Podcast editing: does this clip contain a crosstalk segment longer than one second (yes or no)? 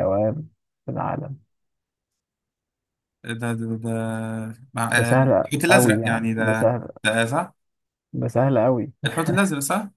yes